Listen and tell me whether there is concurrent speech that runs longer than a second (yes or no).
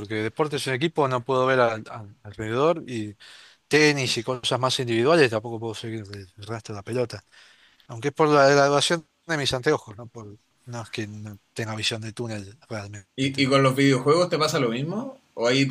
no